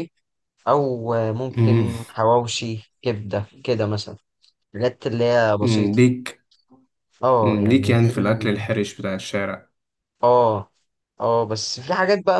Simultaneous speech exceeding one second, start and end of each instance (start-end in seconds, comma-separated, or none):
7.4-8.7